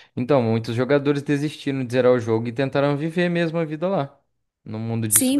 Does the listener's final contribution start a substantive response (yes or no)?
yes